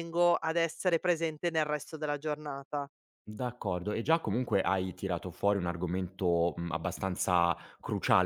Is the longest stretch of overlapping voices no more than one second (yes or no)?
yes